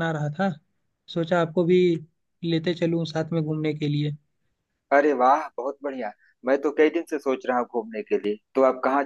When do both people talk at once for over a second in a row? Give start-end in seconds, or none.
none